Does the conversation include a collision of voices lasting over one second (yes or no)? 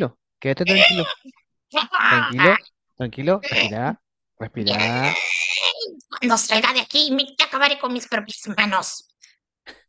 no